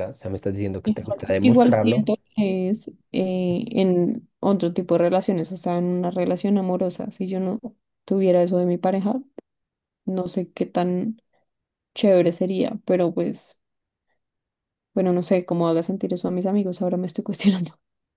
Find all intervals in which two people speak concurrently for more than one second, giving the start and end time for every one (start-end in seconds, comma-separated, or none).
0.8-2.1